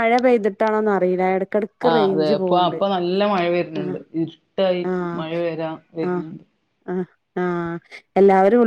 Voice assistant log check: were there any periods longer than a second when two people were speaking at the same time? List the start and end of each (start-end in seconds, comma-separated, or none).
none